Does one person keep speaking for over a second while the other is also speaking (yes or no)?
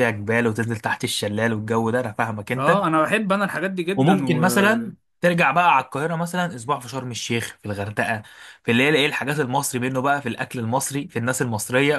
no